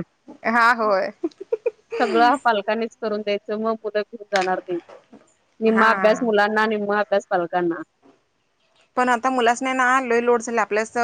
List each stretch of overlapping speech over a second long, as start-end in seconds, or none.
none